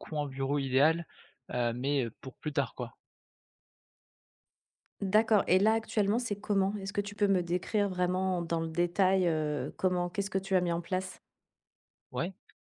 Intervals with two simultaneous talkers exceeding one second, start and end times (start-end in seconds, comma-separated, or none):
none